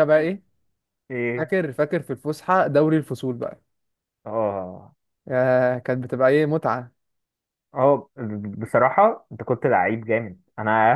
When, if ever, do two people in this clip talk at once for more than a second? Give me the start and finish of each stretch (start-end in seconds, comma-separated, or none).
none